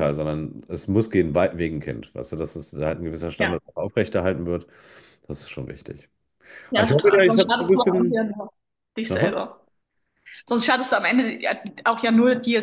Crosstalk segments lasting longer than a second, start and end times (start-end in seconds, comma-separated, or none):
6.7-8.2